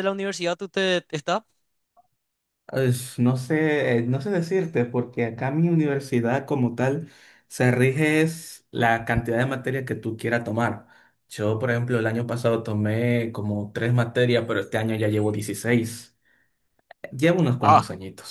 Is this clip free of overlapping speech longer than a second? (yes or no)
yes